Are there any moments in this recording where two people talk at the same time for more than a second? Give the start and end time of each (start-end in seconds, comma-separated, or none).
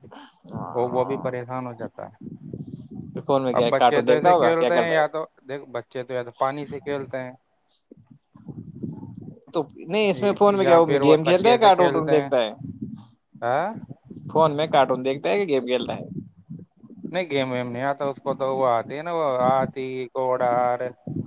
3.6-5.0, 10.2-12.3